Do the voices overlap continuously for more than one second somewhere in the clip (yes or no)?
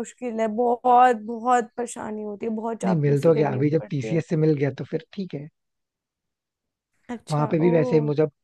yes